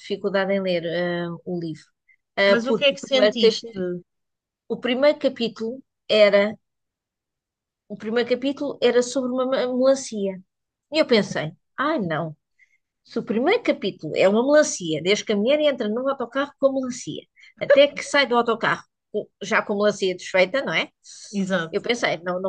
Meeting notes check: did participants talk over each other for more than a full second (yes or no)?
yes